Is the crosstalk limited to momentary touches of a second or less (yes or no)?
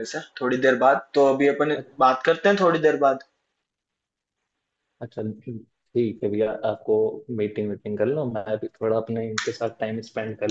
yes